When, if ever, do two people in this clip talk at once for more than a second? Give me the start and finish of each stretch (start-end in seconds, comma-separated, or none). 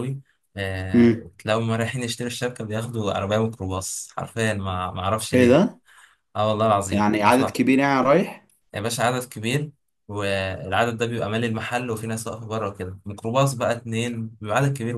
none